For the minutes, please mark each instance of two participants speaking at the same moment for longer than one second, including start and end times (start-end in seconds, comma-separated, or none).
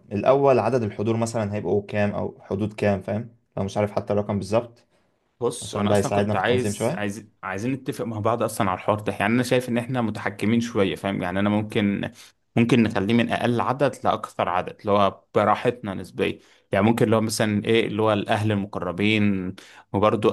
5.6-7.1